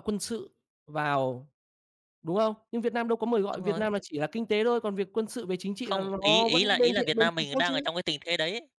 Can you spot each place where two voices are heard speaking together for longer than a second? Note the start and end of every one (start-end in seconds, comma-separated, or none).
5.8-7.7